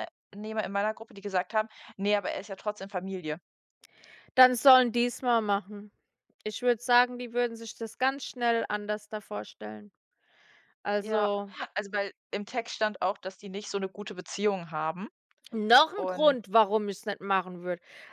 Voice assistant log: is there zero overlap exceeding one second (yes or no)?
yes